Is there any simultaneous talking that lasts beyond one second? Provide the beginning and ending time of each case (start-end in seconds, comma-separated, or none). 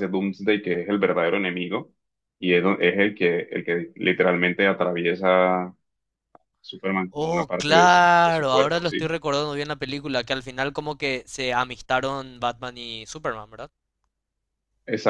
7.1-9.1